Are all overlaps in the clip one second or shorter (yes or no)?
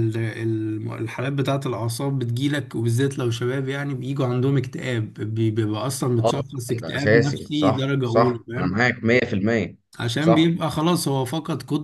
no